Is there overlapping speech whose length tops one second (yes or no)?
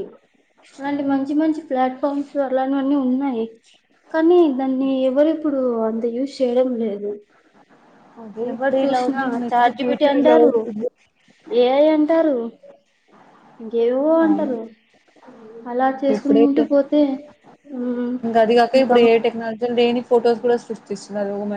yes